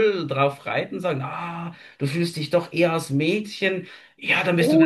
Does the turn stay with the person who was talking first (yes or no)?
no